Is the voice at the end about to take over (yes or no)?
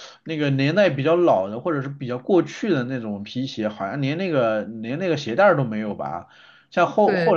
no